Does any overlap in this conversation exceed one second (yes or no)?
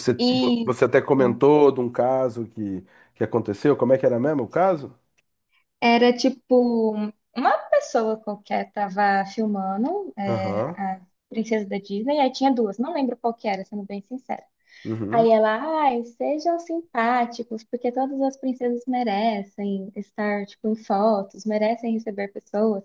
no